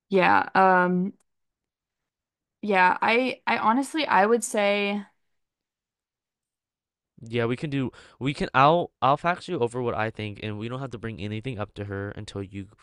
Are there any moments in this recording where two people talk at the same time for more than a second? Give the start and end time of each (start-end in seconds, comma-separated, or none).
none